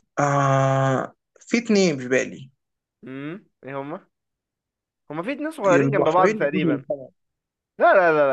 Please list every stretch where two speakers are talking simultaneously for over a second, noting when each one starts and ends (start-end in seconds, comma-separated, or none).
5.7-6.8